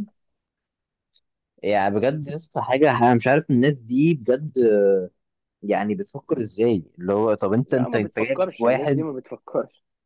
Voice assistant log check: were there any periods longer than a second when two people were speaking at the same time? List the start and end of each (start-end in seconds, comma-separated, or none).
7.7-9.1